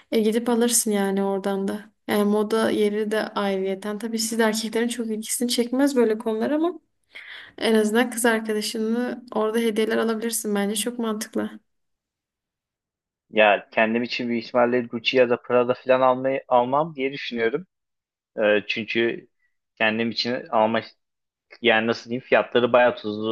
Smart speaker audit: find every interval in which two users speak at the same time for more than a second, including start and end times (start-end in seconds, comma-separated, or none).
none